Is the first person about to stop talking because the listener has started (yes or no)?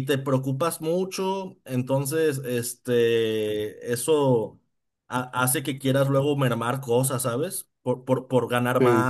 no